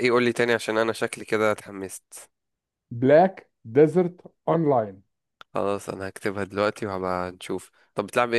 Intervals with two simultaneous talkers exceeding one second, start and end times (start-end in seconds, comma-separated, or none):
none